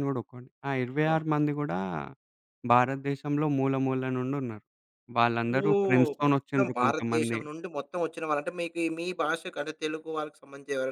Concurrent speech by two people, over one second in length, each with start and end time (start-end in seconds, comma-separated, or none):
5.7-7.4